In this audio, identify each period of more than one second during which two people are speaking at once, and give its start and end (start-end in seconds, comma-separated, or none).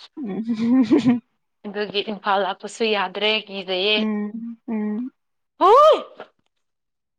none